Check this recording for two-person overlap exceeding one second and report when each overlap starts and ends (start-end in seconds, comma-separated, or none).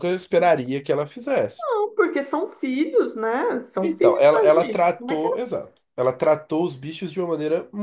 3.8-5.4